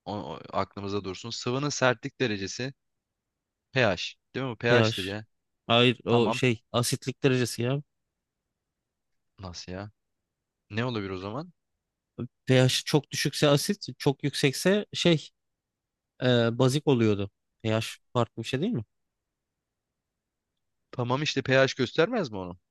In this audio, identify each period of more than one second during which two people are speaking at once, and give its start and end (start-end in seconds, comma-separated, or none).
none